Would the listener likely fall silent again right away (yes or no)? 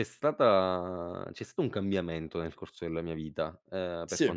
yes